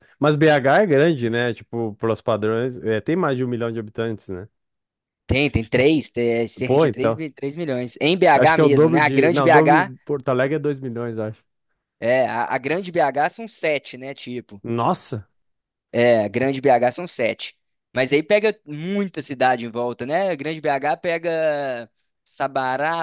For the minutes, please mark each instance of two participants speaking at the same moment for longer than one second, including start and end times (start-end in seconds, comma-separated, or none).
8.3-9.9